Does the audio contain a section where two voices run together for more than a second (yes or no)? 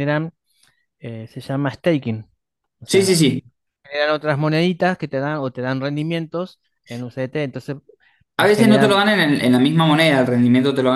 no